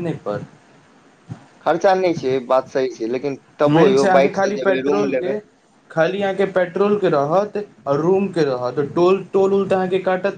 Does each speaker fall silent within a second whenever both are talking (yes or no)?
no